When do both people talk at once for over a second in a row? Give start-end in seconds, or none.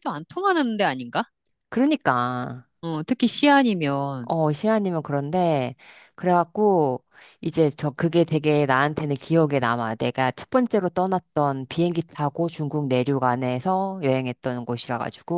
none